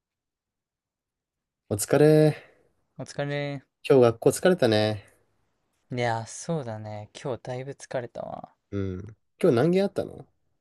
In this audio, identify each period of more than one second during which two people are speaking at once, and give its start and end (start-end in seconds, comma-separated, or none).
none